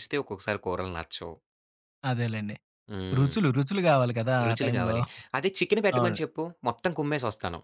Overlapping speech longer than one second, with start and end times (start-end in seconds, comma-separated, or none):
none